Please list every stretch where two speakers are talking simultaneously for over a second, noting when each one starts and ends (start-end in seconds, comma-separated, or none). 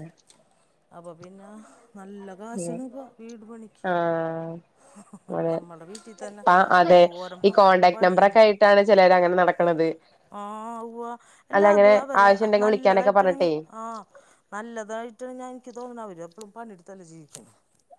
11.6-13.4